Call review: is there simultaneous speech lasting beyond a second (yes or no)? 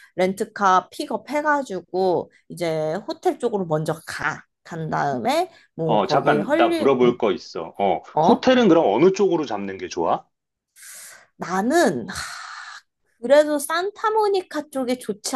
yes